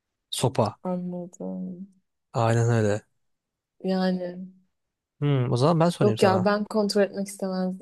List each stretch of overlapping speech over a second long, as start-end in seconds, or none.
none